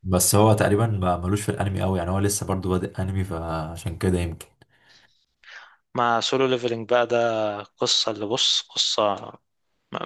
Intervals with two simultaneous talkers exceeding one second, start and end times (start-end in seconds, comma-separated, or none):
none